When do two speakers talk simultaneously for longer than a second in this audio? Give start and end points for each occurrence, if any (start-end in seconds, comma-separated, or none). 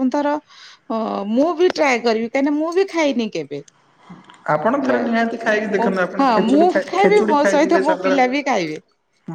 6.2-8.2